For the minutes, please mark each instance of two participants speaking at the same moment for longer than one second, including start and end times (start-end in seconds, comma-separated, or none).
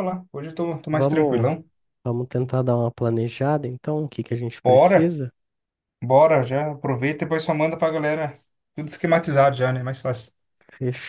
none